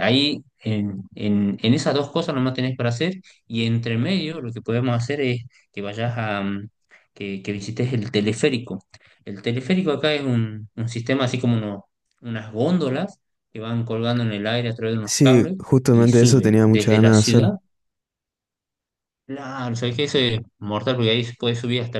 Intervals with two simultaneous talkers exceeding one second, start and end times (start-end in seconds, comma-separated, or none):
15.0-17.5